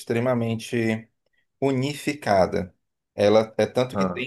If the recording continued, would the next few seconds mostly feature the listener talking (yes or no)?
no